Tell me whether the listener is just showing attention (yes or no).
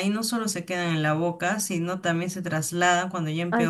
yes